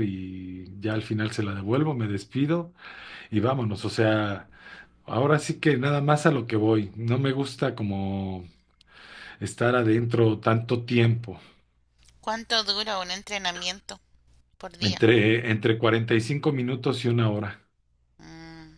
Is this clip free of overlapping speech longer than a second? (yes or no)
yes